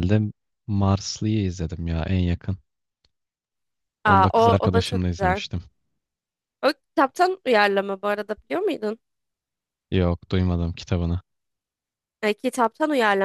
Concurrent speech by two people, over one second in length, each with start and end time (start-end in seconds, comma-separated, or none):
4.0-5.4